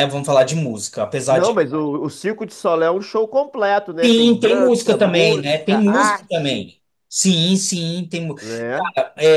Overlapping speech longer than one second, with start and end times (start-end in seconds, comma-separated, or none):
4.0-6.7